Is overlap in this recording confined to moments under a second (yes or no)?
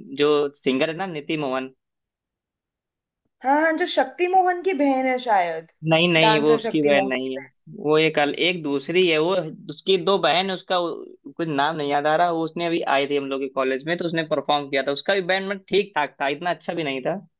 no